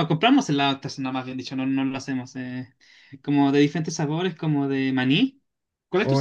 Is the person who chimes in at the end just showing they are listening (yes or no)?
no